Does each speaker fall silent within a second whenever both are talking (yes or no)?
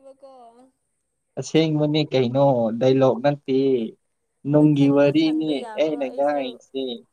no